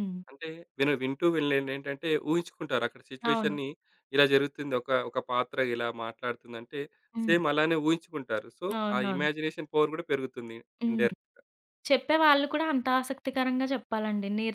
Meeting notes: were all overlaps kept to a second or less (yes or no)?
yes